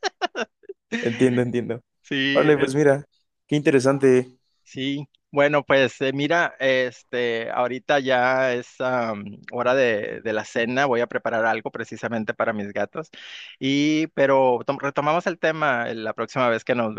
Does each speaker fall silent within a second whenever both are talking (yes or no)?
yes